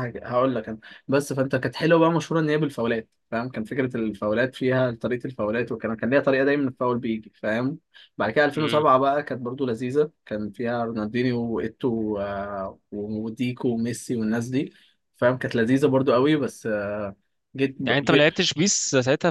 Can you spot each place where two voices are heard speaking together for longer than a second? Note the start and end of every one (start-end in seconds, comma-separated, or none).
none